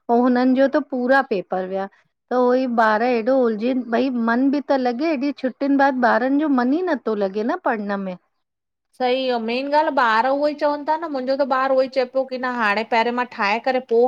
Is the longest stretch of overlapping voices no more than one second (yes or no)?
yes